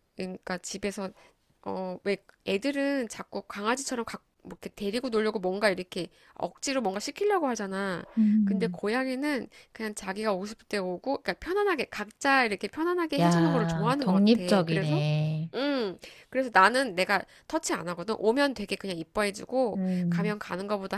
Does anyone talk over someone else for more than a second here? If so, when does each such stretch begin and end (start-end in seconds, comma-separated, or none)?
13.2-15.0